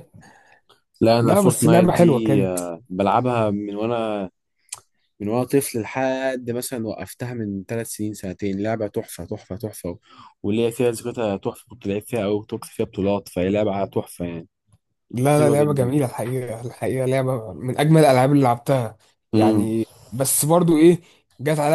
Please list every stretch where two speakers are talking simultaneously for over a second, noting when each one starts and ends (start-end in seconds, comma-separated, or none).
1.2-2.6